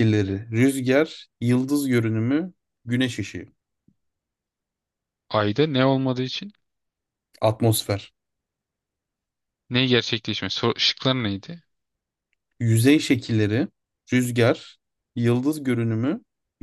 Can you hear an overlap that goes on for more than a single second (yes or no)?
no